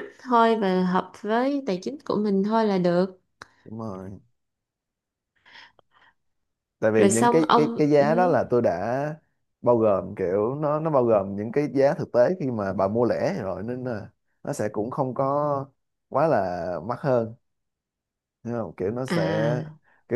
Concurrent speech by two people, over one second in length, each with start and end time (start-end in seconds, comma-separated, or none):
7.0-8.3